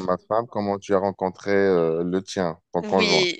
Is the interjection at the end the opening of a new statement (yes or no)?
yes